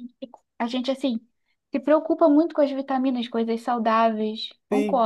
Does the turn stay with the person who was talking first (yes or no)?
no